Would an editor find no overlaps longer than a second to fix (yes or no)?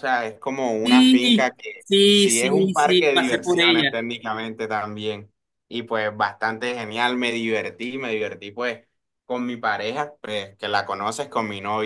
no